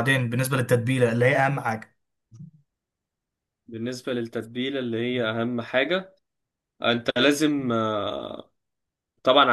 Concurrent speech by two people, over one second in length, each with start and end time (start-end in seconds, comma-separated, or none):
none